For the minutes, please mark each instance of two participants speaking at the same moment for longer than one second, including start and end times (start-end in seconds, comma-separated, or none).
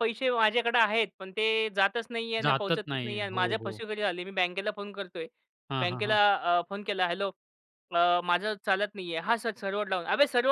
2.4-3.8